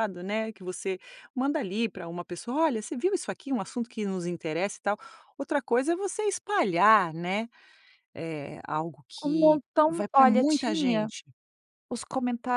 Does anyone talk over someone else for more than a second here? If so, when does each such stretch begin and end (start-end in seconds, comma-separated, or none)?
9.2-11.1